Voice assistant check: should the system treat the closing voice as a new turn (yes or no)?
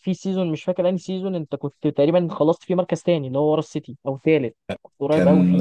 yes